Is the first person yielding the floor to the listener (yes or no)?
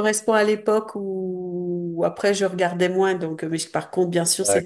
no